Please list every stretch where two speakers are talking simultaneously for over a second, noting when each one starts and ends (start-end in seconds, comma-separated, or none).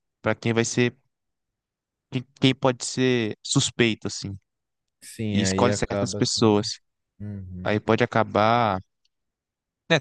5.3-6.6